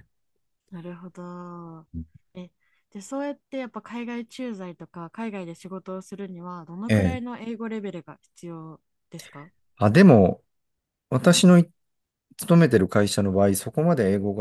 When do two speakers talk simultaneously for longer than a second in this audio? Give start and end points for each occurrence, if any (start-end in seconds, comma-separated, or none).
none